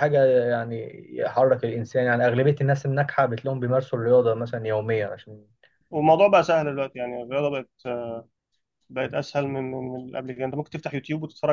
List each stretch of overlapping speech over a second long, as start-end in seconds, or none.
none